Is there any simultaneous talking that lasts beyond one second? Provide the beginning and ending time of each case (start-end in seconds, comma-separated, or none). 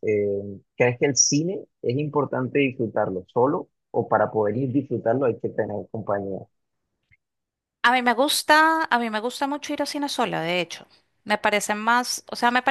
none